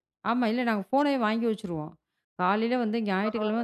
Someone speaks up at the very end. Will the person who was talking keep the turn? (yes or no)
yes